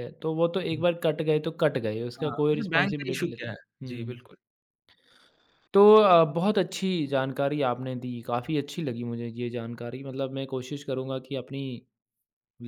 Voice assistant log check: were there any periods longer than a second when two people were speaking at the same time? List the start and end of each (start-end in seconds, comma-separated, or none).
2.2-4.2